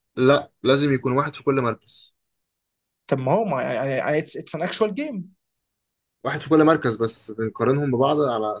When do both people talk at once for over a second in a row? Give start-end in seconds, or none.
none